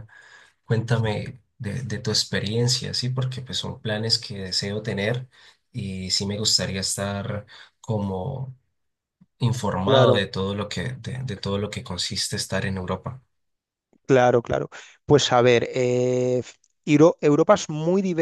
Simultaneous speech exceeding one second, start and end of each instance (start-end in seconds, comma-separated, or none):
none